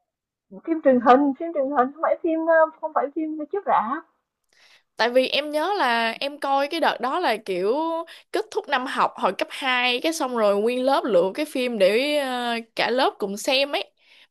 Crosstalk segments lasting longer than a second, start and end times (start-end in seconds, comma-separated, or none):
none